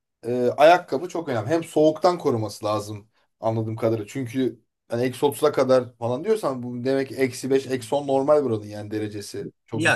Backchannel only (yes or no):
no